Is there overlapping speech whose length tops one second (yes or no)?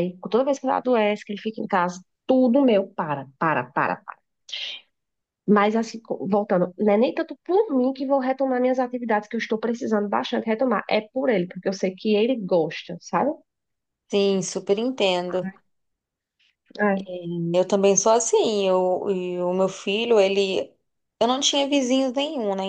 no